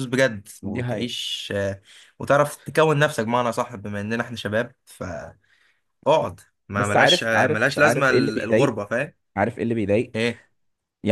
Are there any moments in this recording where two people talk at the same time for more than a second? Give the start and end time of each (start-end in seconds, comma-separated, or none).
6.8-8.8